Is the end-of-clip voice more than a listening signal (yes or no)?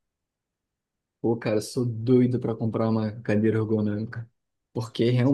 no